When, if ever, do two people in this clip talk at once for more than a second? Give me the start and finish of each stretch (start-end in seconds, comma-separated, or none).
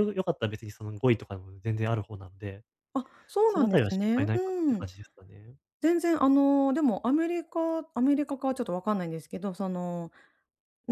3.5-4.9